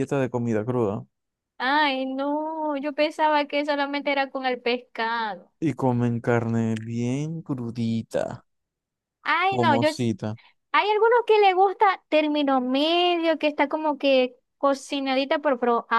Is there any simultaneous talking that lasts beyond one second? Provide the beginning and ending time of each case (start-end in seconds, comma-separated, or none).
none